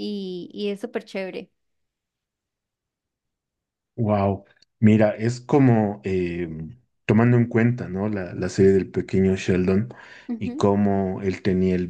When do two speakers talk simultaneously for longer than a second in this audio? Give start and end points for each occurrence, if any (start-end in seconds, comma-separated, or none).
none